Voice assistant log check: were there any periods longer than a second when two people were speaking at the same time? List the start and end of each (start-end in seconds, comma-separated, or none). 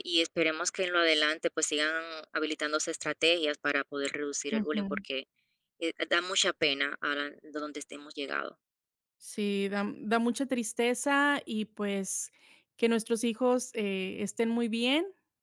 none